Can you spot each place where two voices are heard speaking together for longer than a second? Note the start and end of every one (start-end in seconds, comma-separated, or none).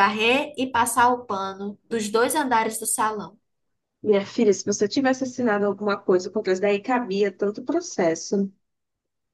none